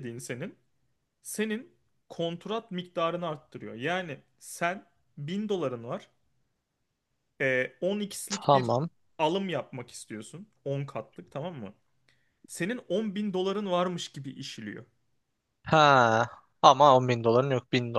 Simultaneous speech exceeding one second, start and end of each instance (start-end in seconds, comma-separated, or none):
none